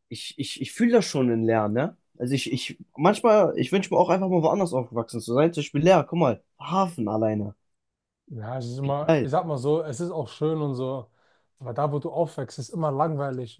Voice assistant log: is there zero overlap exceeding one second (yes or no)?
yes